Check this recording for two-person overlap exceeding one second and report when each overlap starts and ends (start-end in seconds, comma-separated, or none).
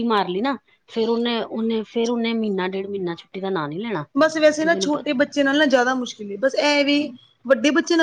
none